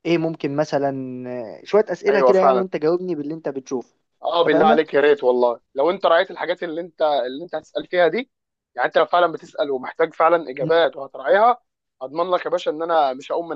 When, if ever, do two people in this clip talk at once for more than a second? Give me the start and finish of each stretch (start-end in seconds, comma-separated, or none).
none